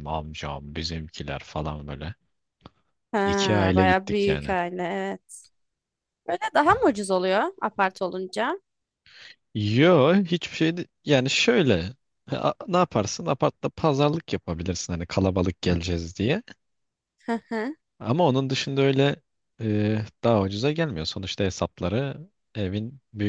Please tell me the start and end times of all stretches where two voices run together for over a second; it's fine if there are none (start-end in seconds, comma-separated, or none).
3.2-4.5